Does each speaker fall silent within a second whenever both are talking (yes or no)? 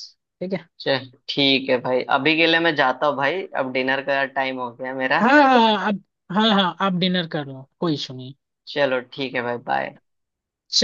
yes